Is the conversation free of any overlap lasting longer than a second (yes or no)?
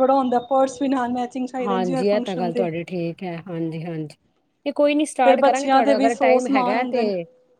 no